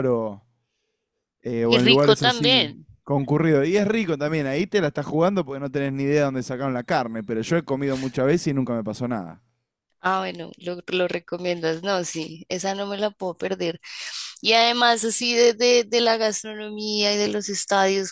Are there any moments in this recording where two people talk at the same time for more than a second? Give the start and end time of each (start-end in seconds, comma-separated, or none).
1.6-2.9